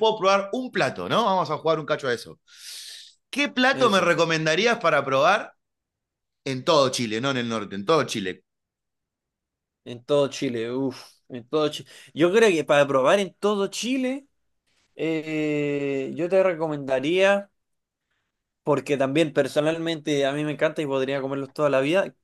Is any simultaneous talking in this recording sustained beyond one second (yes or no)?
no